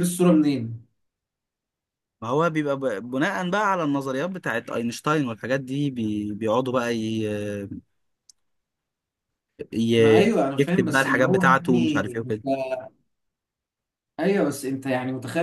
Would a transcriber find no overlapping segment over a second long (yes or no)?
no